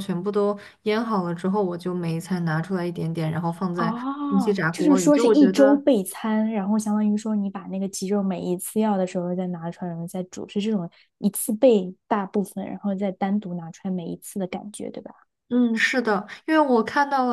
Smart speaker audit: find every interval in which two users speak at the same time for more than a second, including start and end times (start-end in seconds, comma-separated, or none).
3.8-5.8